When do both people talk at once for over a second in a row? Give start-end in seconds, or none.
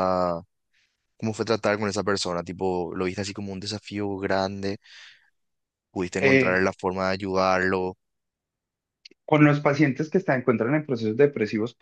none